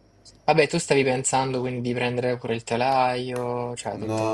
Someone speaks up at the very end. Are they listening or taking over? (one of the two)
taking over